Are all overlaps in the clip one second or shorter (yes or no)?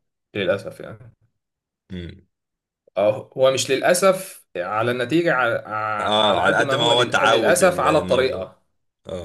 no